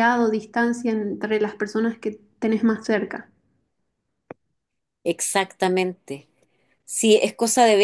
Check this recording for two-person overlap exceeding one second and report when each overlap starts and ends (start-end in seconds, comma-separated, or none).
none